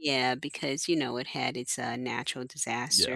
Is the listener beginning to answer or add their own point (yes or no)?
yes